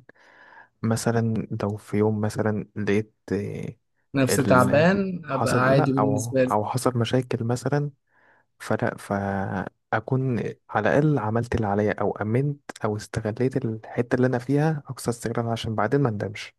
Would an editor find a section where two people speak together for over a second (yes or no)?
yes